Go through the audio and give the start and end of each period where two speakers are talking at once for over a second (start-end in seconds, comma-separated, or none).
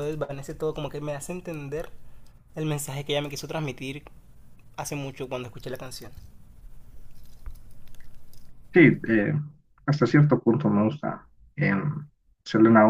none